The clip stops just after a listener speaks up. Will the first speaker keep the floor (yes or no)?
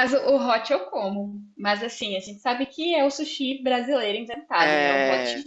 yes